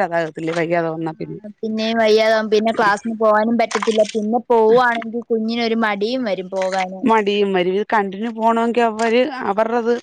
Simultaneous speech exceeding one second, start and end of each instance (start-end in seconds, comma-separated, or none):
none